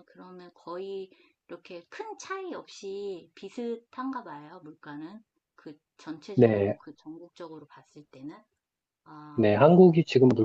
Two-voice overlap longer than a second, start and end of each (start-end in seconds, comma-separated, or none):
none